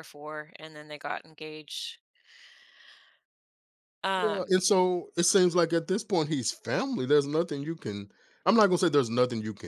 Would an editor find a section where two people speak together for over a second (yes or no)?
no